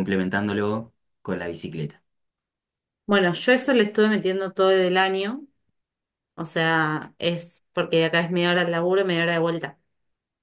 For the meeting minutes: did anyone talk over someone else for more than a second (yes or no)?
no